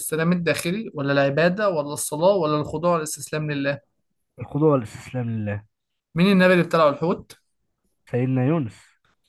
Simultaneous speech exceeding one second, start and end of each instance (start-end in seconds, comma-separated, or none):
none